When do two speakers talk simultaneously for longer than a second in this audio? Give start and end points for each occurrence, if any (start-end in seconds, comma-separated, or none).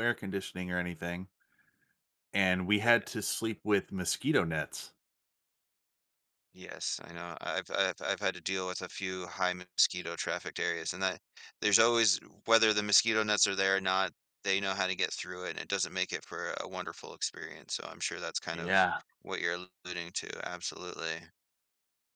none